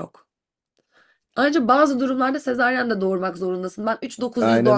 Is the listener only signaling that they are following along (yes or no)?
yes